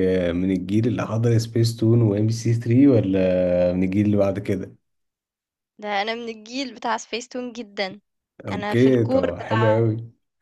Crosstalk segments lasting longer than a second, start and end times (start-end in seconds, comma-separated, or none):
8.5-9.8